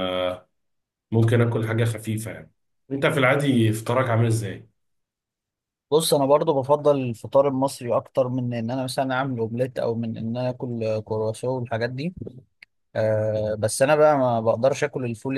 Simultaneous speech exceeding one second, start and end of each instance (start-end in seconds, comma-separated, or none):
none